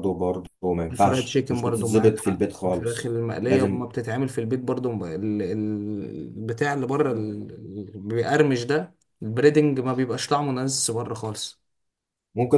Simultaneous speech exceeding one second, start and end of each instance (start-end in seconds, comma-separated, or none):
0.9-3.8